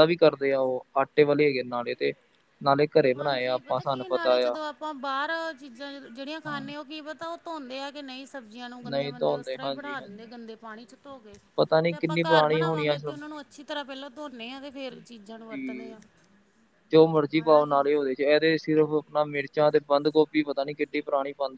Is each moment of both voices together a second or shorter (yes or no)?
no